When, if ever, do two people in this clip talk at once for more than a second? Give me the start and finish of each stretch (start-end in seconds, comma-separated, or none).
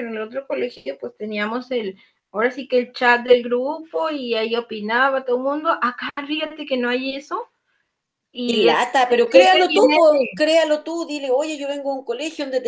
8.4-10.2